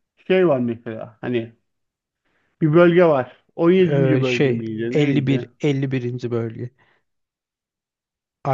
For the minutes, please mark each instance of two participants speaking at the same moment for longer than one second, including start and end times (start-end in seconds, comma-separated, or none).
3.9-5.5